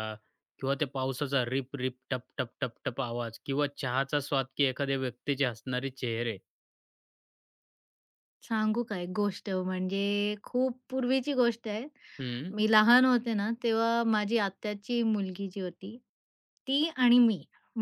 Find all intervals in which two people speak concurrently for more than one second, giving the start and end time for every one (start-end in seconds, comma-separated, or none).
none